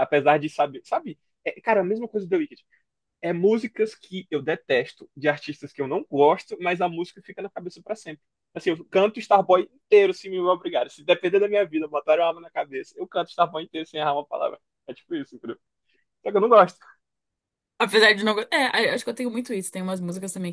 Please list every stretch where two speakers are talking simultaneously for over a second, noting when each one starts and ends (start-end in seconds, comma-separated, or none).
none